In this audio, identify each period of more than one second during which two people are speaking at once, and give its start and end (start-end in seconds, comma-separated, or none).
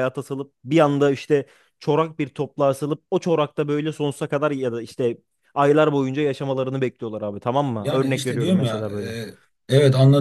7.8-9.2